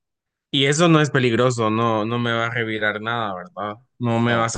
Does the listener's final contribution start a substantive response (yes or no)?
no